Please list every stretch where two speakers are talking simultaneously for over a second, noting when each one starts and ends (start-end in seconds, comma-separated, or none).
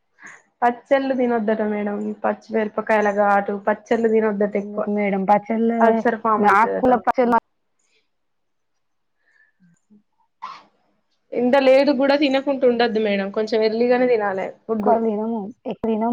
none